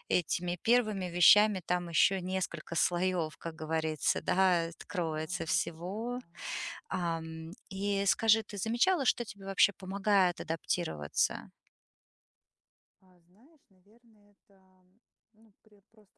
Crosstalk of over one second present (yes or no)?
yes